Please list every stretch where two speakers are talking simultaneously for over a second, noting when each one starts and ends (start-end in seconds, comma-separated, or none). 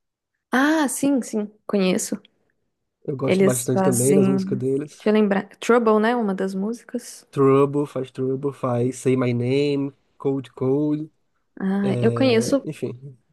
3.2-5.1